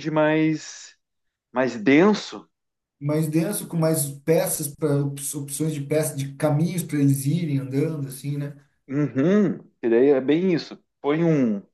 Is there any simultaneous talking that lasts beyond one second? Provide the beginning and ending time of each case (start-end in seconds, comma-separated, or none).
none